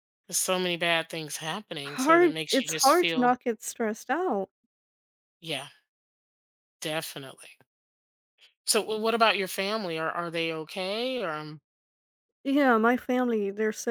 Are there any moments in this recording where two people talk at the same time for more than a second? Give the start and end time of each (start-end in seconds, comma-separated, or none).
1.9-3.3